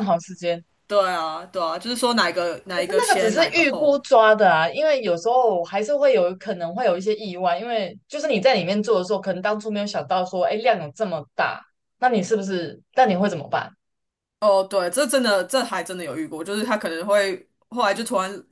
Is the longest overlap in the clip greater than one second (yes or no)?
yes